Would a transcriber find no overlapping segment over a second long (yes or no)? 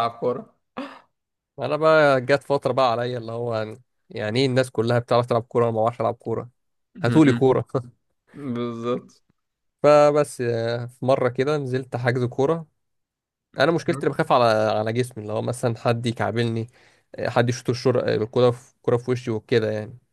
yes